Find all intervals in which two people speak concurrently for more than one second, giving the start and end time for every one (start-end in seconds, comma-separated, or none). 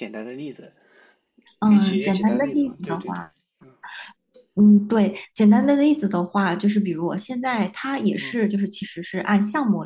1.6-3.2